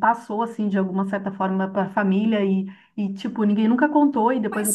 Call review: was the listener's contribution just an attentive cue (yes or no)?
yes